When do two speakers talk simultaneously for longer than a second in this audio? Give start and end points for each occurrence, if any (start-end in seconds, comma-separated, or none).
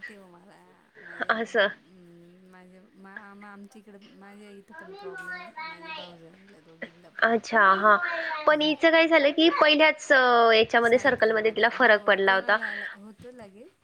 10.9-12.6